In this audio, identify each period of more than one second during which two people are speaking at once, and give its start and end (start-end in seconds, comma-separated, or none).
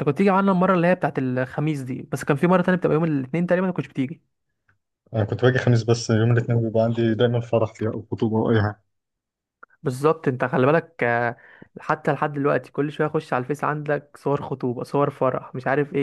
none